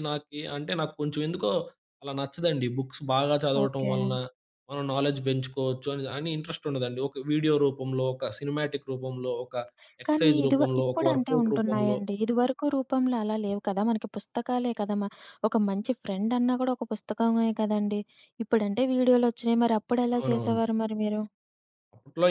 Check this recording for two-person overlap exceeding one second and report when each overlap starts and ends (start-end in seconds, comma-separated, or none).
10.1-12.0